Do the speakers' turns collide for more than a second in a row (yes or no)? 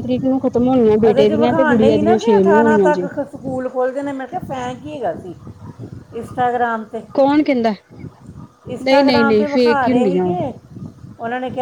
yes